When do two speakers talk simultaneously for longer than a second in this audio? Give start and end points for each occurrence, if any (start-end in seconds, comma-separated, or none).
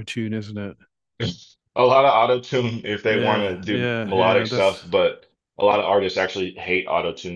3.1-4.8